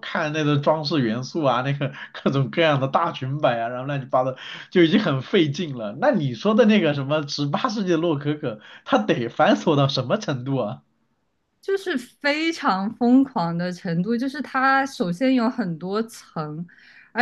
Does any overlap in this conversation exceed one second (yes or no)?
no